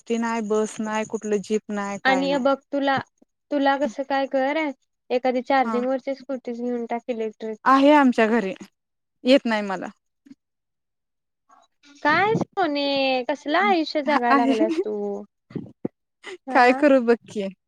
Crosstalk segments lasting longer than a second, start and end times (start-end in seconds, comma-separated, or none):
none